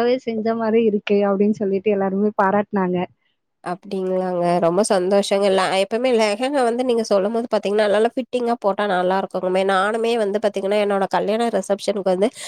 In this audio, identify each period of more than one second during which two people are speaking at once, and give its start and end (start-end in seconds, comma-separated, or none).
none